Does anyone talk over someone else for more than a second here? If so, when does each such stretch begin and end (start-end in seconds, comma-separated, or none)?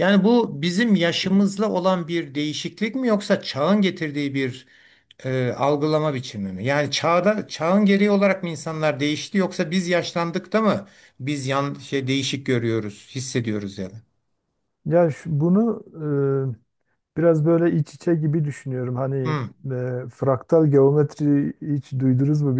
none